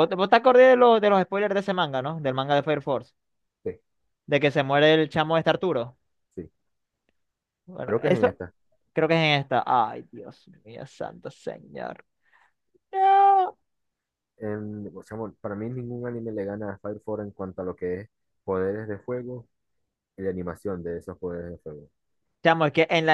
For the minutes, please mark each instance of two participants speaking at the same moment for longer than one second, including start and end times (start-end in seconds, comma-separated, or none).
none